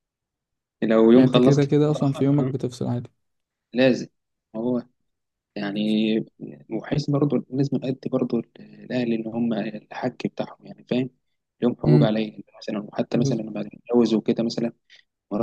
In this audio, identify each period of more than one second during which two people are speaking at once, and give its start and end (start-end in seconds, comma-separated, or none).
1.1-2.5